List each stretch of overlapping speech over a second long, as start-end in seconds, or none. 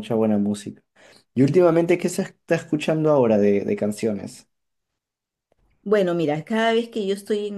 none